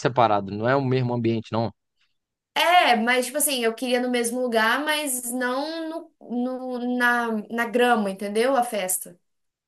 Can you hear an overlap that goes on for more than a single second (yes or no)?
no